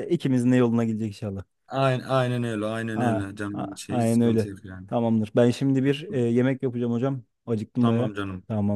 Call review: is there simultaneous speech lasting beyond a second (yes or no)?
yes